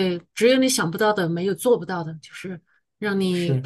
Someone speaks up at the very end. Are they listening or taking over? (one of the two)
listening